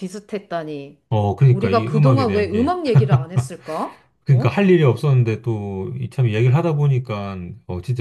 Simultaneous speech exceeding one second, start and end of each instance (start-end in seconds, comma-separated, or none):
1.5-2.8